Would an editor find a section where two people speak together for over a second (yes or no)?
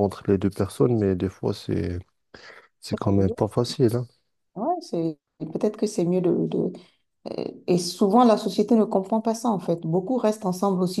no